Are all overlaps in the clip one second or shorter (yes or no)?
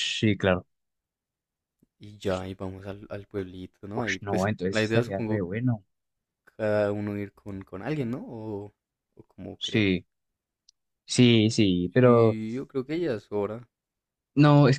no